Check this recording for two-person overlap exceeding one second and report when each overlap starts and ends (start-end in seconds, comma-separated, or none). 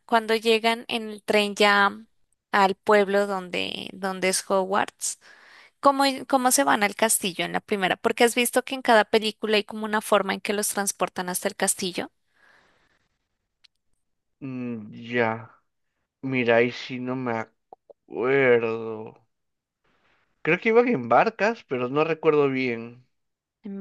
none